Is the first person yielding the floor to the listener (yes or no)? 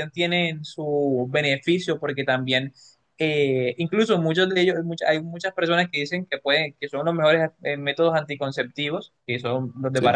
no